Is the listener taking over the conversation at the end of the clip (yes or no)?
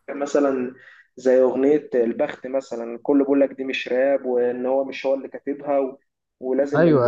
no